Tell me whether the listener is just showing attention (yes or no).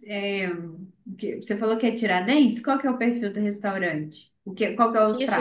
no